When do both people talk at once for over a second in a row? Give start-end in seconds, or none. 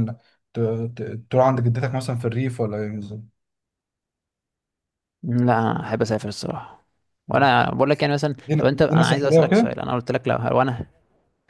8.4-9.7